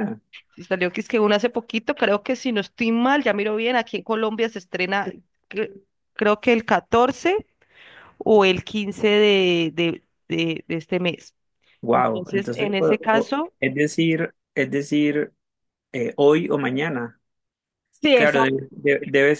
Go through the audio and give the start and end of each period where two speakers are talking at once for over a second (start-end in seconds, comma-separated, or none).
11.9-13.5